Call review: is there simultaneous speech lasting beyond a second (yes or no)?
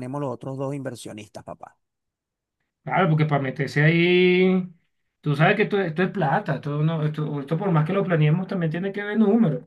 no